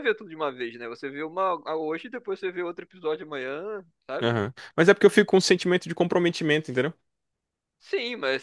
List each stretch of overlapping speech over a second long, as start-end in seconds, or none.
none